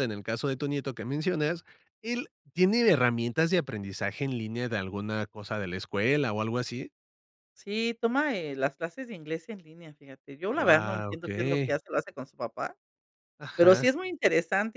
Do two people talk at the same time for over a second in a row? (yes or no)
yes